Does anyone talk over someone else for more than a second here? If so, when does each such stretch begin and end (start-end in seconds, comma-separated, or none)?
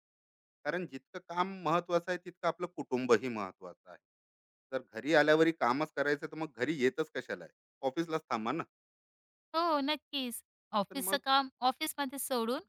none